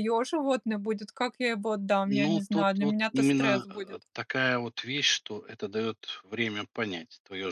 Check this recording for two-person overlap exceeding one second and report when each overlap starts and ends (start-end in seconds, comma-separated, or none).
2.0-4.0